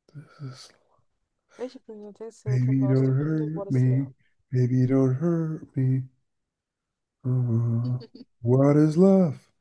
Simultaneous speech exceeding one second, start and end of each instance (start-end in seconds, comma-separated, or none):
2.5-4.1